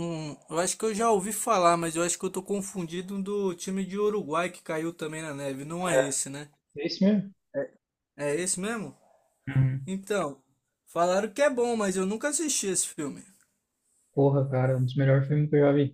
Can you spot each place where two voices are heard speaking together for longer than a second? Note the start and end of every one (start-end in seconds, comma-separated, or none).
none